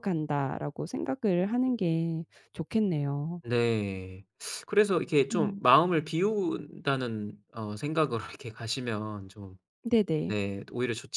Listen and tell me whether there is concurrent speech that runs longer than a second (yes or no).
no